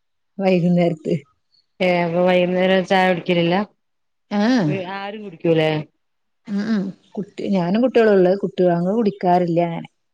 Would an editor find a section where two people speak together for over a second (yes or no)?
no